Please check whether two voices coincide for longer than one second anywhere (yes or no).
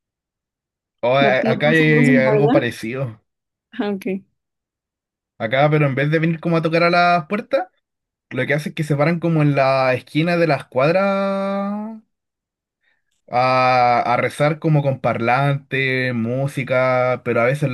yes